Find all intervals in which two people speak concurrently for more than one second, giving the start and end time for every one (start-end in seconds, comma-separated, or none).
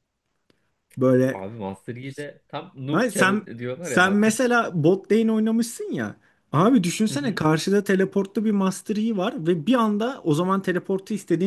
2.9-4.3